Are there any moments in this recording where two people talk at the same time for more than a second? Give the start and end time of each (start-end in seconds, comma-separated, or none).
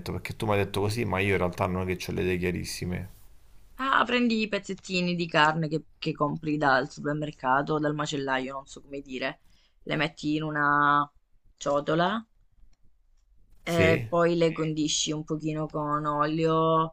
none